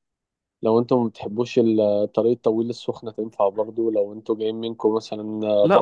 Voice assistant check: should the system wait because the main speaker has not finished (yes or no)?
no